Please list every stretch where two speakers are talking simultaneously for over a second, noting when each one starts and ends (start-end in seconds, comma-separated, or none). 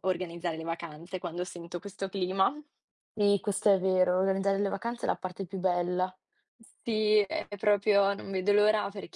none